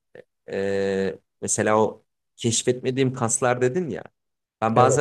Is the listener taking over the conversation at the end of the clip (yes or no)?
no